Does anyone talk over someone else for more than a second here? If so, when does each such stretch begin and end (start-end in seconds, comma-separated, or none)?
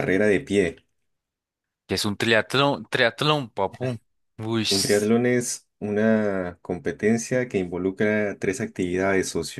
none